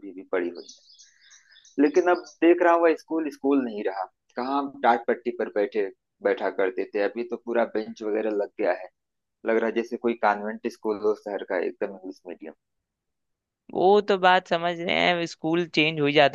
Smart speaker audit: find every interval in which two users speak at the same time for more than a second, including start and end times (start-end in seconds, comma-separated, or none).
none